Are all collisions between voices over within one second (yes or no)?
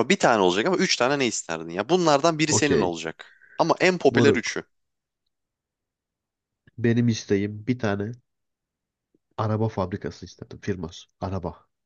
yes